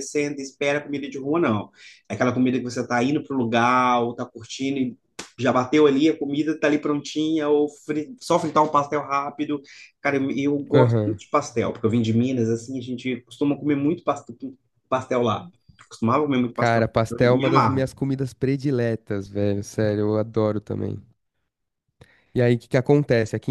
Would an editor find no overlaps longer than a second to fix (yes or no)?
no